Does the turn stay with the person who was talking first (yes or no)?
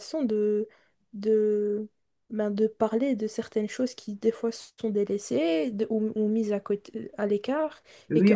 yes